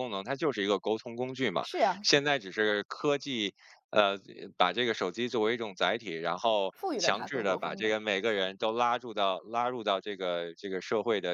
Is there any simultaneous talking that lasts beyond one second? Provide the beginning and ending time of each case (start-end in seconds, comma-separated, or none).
6.7-8.0